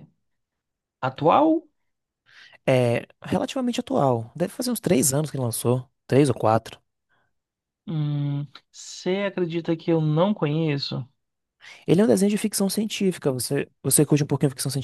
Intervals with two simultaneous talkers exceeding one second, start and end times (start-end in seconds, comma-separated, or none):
none